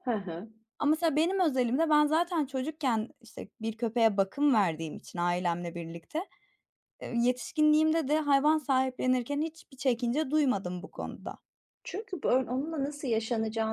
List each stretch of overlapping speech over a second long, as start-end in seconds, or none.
none